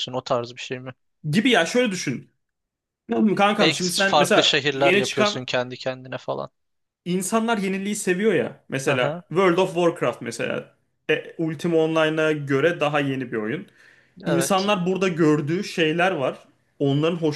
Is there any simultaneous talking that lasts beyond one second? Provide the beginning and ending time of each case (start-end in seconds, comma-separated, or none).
3.6-5.5